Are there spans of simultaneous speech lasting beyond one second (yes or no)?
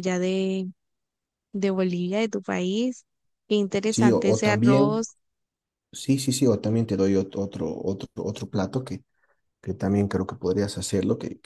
yes